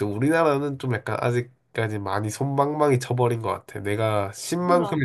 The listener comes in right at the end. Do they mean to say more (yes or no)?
no